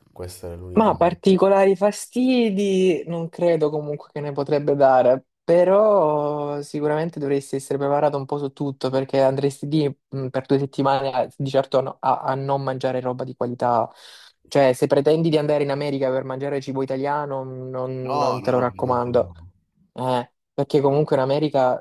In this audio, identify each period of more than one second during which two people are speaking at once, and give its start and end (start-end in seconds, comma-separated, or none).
18.0-19.3